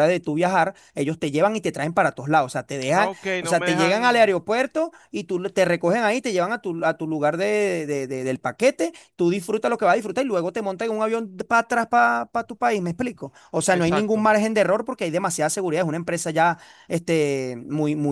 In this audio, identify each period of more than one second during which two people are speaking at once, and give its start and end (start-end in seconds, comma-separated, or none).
2.9-4.3